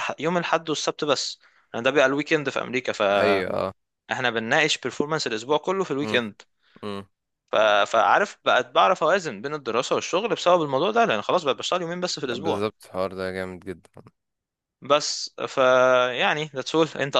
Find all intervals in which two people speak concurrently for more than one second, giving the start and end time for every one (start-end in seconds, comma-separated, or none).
none